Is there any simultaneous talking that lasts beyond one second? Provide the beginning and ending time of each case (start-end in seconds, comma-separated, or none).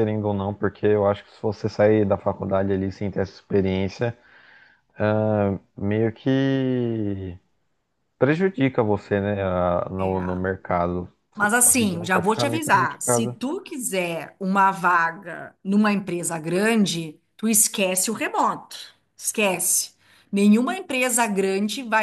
11.3-13.3